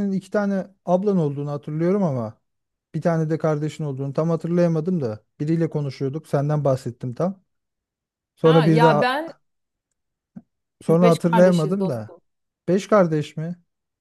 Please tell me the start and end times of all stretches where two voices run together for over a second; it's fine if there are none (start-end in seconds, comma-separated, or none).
10.9-12.1